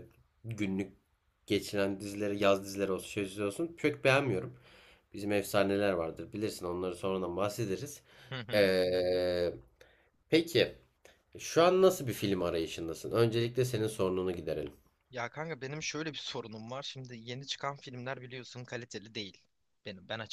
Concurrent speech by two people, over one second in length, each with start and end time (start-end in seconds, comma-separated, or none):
none